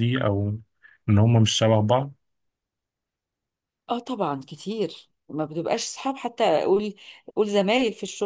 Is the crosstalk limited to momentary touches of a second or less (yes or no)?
yes